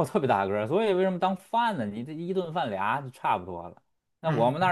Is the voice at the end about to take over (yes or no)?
no